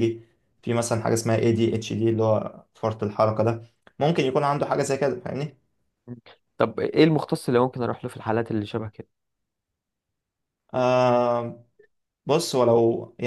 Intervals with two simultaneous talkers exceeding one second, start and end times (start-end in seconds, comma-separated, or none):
none